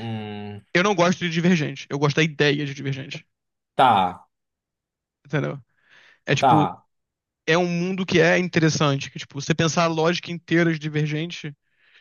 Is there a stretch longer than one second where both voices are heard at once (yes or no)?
no